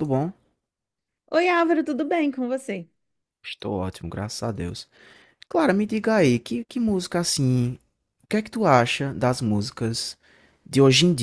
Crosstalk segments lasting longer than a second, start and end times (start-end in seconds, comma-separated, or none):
none